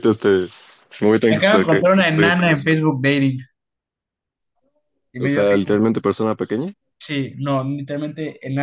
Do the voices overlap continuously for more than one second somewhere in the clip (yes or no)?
yes